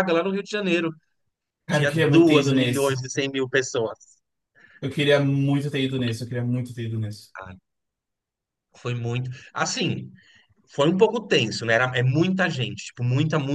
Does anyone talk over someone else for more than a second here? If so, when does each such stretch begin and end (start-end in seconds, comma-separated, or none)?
1.7-3.0